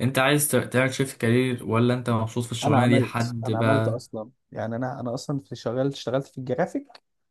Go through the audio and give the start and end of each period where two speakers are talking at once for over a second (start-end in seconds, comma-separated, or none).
2.6-4.0